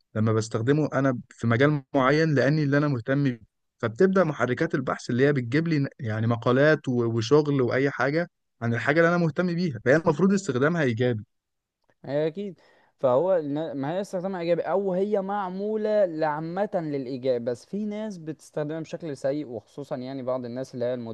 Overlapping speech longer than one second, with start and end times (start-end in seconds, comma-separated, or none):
none